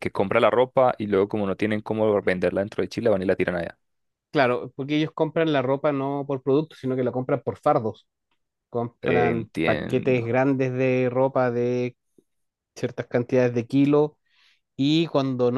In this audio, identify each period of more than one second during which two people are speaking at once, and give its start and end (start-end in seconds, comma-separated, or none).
9.0-10.3